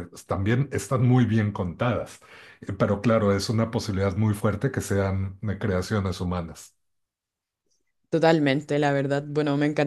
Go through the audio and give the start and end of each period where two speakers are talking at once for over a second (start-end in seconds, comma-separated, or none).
none